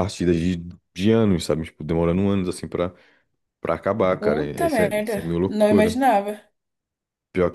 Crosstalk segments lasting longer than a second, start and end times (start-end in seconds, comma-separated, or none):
4.2-6.0